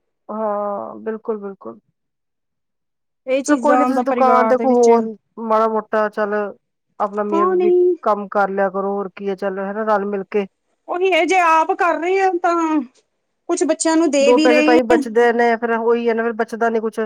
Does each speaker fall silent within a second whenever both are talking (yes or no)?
no